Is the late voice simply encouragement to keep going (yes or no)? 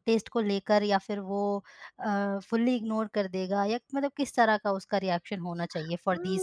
no